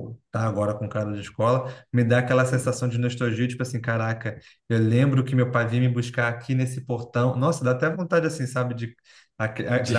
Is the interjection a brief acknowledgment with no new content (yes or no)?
yes